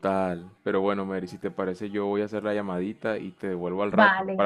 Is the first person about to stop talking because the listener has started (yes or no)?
yes